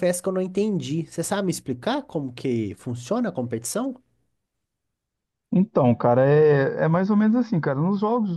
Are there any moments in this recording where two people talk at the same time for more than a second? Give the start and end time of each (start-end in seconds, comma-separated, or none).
none